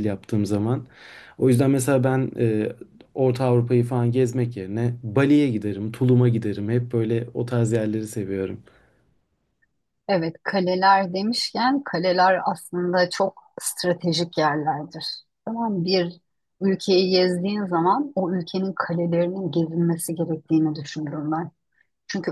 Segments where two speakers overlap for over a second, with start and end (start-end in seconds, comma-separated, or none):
none